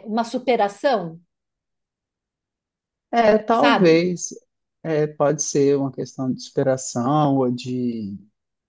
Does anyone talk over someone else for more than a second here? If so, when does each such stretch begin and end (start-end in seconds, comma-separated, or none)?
none